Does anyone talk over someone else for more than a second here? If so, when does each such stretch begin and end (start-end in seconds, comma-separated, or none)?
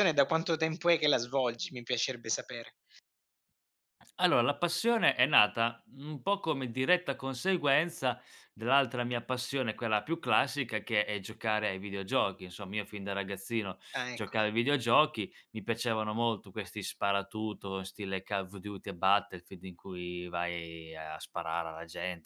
none